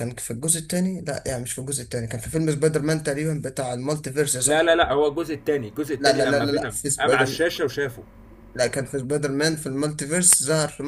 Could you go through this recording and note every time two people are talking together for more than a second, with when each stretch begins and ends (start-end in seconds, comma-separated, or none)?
6.0-7.4